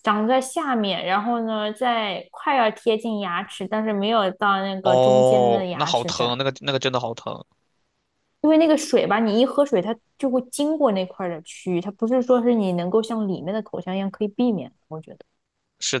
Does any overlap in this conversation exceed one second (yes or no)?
yes